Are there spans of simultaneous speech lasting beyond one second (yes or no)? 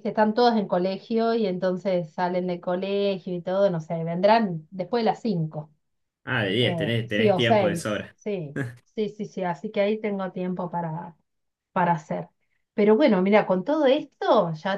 yes